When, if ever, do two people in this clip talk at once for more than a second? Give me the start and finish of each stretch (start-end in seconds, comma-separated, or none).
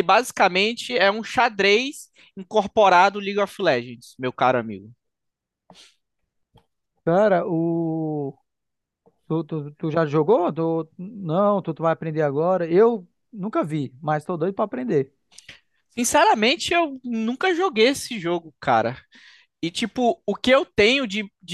none